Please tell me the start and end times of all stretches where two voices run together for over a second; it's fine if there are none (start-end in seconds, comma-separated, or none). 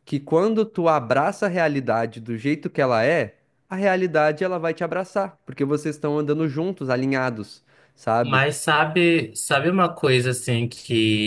none